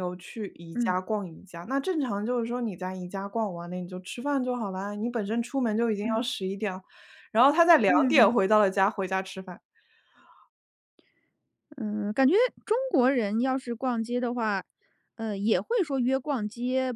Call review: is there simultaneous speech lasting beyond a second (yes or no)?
no